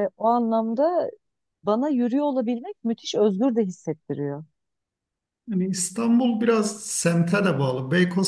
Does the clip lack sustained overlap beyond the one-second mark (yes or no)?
yes